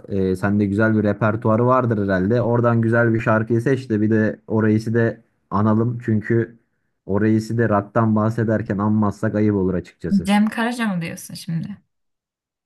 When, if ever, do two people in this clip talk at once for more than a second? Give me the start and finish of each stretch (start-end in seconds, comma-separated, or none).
none